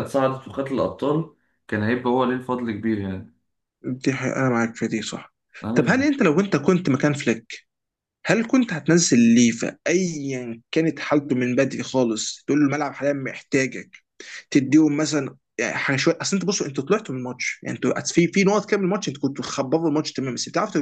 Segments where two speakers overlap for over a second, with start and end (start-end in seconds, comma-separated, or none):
none